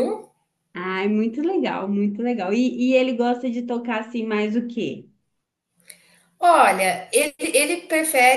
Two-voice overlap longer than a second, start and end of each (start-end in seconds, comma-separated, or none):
none